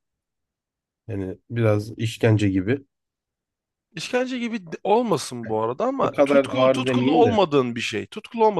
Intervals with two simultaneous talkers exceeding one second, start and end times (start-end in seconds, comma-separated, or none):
6.0-7.4